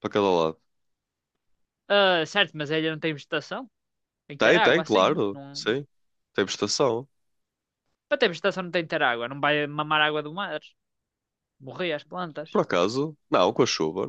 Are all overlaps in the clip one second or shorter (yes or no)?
no